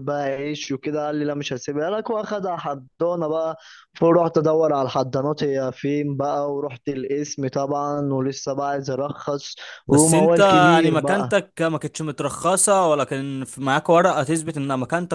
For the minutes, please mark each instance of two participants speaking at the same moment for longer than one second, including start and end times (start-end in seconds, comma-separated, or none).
9.9-11.3